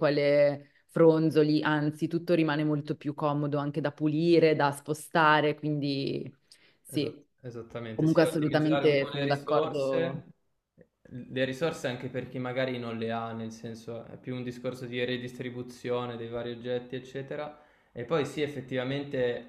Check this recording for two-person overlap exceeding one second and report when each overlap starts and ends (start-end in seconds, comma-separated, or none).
7.9-10.2